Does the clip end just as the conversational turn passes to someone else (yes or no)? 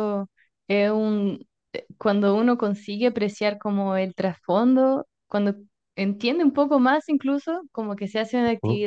no